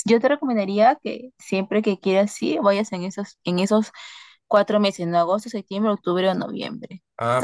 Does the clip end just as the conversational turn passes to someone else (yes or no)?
no